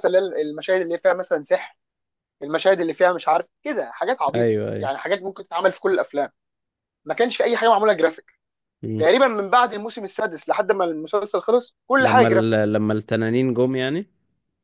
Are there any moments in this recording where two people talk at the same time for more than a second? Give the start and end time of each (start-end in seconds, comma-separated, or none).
none